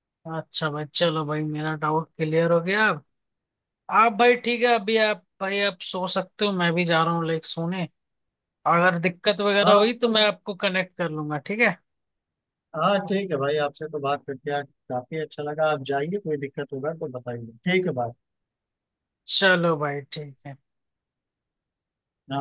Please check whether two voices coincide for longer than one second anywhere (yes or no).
no